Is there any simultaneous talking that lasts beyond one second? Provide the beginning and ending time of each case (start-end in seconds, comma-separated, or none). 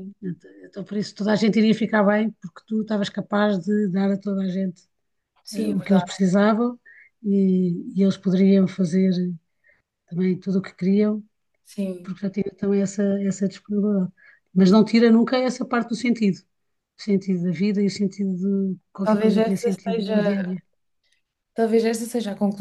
19.0-20.3